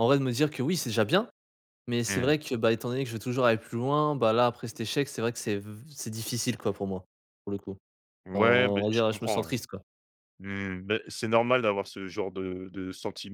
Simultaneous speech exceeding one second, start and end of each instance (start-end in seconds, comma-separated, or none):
8.3-9.5